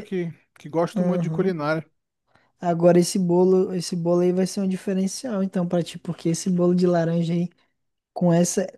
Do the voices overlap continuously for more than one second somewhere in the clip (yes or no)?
no